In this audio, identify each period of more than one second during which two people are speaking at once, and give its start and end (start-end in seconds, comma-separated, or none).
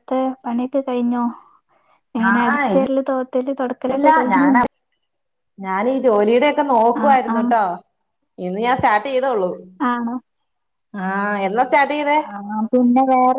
none